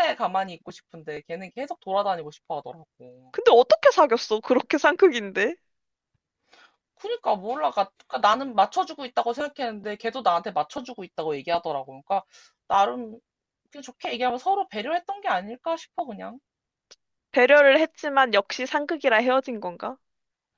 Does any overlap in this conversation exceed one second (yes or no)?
no